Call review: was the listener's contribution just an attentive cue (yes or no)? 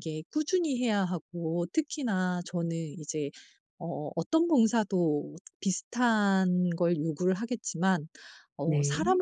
yes